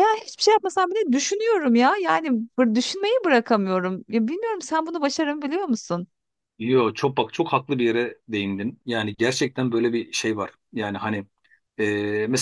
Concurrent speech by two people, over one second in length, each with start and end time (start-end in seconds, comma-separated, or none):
none